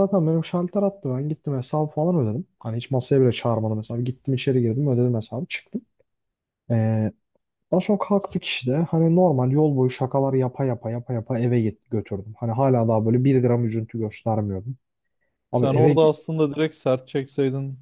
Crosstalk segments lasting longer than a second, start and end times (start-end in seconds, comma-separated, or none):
none